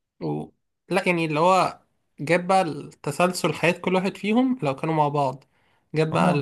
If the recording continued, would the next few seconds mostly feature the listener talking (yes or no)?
no